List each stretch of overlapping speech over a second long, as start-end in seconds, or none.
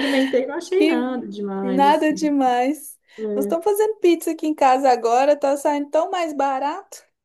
0.7-2.3